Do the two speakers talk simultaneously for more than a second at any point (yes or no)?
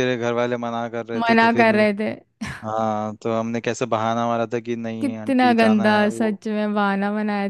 yes